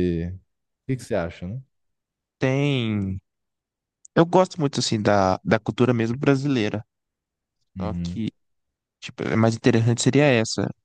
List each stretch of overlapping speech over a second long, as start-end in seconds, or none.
none